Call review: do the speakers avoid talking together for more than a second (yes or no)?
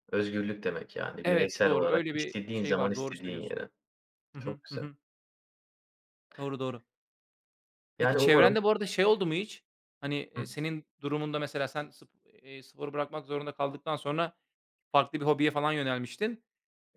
no